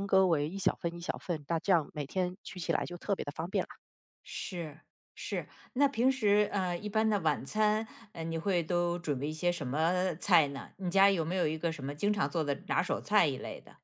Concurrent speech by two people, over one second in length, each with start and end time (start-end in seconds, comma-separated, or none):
none